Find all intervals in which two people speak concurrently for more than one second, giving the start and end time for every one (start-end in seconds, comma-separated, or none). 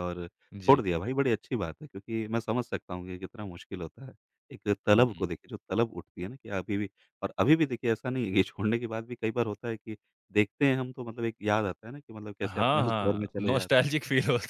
12.4-13.8